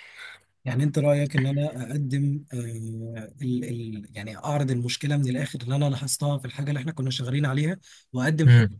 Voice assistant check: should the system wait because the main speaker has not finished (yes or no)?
yes